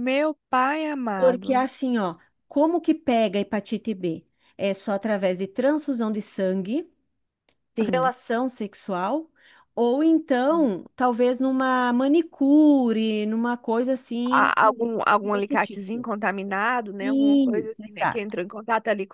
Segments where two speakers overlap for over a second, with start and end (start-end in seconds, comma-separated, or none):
14.3-16.1, 17.0-18.4